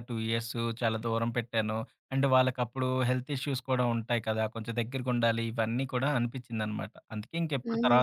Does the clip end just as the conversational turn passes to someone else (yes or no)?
yes